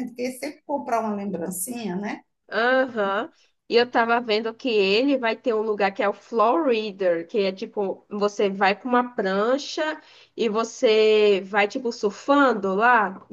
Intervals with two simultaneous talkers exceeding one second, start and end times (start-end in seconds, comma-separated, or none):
none